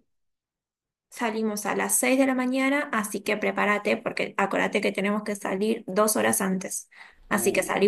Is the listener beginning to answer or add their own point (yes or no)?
no